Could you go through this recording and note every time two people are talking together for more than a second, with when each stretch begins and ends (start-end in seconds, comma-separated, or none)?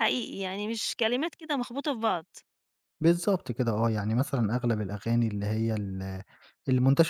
none